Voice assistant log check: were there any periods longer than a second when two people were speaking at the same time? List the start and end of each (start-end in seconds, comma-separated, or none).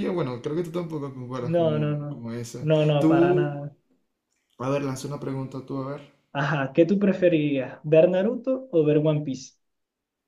1.4-3.6